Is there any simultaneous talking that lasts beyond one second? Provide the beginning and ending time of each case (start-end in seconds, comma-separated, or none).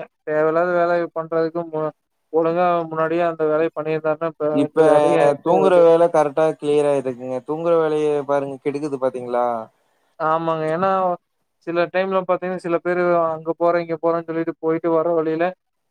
none